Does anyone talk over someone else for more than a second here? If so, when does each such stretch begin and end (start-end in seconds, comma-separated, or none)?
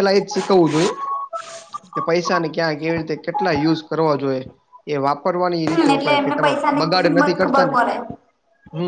6.0-7.8